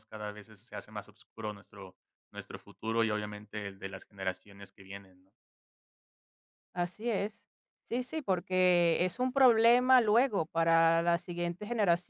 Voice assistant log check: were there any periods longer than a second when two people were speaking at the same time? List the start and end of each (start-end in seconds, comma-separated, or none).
none